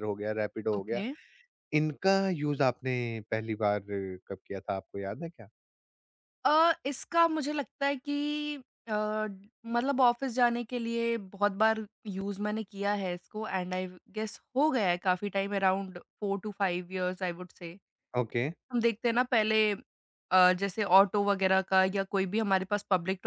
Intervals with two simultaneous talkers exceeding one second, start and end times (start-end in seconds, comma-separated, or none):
none